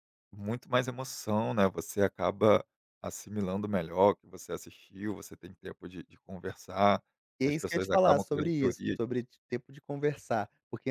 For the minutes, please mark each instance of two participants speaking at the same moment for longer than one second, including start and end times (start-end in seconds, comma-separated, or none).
7.4-9.0